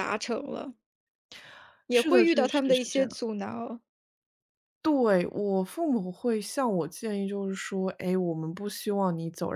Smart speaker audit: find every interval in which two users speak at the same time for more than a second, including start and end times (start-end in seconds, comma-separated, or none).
1.9-3.2